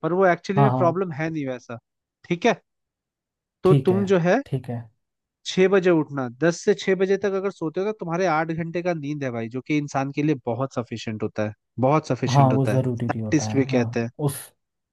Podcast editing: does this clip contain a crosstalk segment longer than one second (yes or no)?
yes